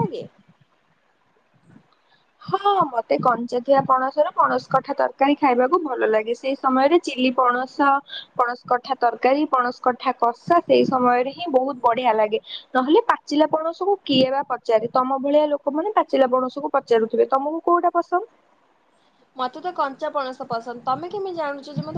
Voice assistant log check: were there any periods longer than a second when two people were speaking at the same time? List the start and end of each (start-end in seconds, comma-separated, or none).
none